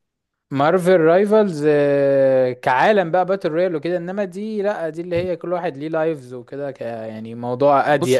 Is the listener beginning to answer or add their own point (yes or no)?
yes